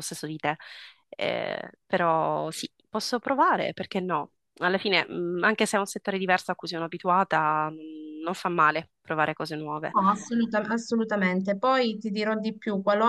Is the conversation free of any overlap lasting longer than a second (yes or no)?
yes